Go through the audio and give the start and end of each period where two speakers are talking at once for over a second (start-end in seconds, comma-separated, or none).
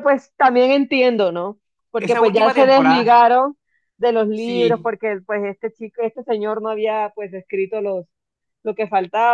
2.0-3.3